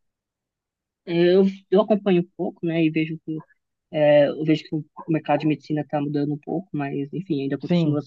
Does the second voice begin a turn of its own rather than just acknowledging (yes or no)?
no